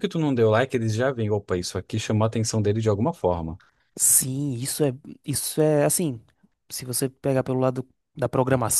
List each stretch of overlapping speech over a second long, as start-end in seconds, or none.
none